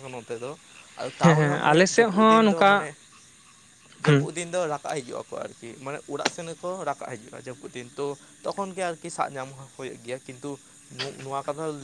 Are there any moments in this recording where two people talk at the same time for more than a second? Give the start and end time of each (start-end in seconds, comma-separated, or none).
1.2-2.9